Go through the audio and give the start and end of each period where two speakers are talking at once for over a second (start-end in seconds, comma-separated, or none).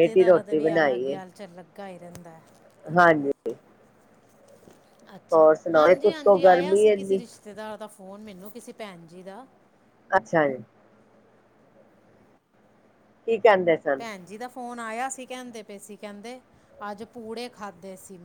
5.3-7.2